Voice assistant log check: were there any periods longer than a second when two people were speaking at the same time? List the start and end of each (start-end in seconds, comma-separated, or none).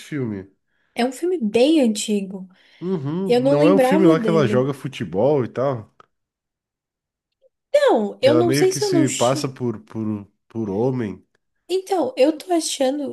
3.2-4.7, 8.2-9.6